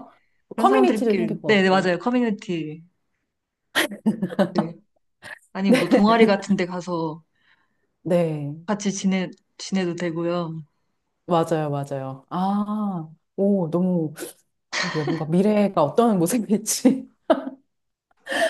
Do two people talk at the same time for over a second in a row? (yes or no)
yes